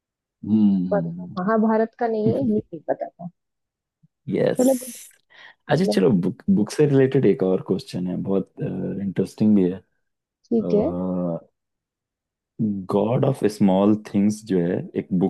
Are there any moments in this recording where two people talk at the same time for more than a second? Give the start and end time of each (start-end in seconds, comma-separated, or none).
none